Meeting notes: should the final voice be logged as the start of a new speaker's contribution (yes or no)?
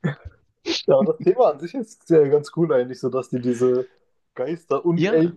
no